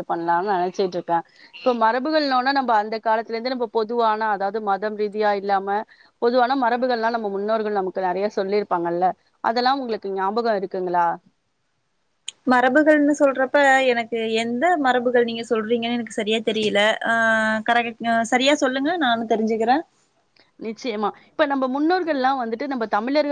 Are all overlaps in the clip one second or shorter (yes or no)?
yes